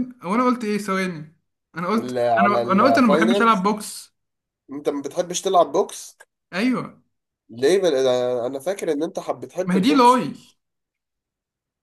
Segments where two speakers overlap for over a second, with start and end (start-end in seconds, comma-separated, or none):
2.0-3.7